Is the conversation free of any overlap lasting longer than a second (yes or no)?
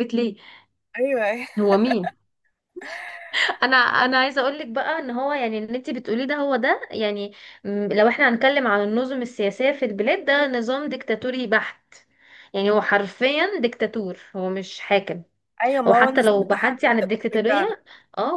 no